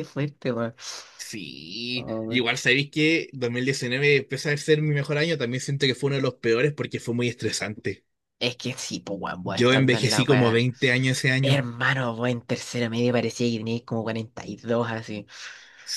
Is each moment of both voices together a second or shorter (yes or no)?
no